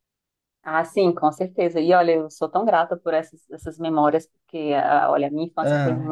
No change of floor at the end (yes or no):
yes